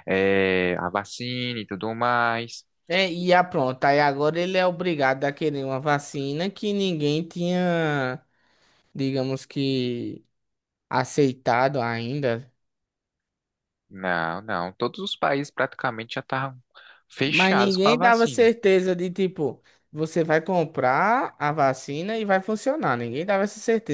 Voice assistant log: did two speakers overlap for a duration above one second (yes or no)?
yes